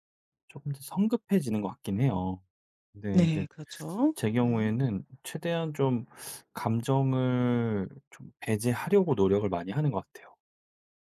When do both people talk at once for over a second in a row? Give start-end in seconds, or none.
none